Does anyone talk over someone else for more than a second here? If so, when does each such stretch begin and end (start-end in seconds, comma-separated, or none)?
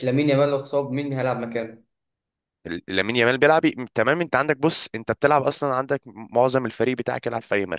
none